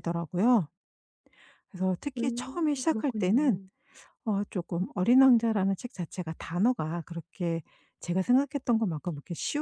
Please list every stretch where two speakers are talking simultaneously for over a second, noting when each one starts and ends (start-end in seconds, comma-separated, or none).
2.2-3.6